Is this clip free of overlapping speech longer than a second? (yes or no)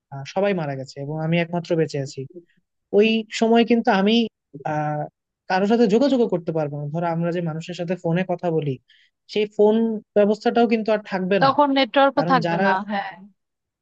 yes